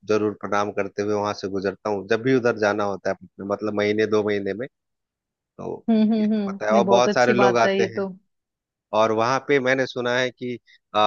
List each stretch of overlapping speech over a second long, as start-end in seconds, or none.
6.2-8.1